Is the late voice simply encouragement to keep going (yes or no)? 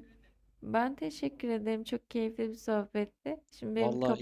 no